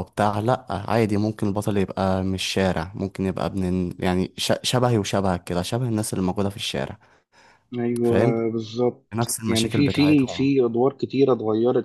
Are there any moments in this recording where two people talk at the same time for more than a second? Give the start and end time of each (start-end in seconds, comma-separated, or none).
9.2-10.5